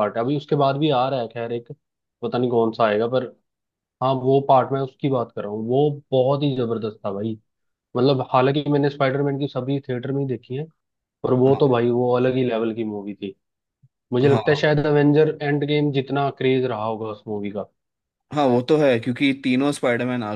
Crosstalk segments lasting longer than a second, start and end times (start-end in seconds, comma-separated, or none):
none